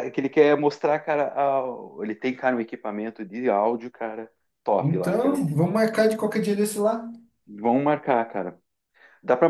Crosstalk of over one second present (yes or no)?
no